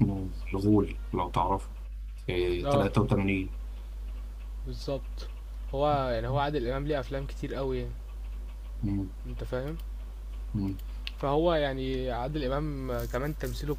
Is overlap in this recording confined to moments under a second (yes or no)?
yes